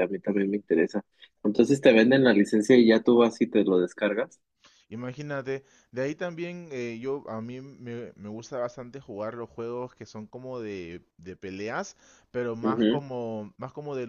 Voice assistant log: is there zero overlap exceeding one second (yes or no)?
yes